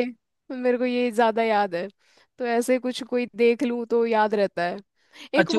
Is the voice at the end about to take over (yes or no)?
yes